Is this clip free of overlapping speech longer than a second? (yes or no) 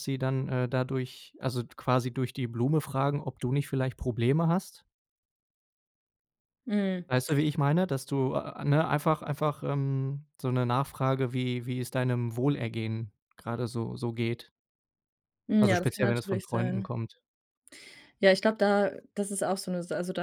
no